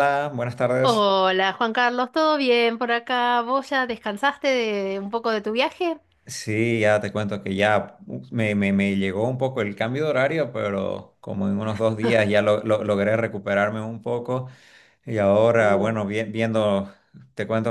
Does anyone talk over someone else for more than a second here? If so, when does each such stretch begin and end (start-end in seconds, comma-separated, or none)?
none